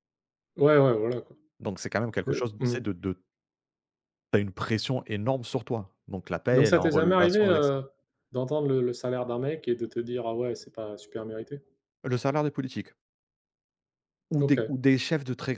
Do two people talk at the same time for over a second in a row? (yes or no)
yes